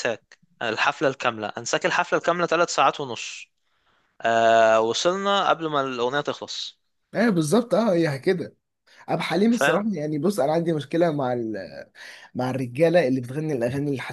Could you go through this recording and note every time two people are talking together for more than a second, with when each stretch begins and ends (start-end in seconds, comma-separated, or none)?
none